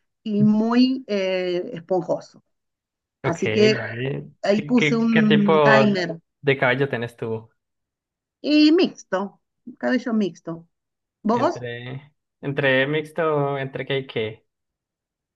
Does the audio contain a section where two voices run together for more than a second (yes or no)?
yes